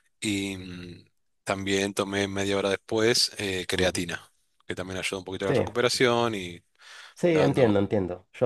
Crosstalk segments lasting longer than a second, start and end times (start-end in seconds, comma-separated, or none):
none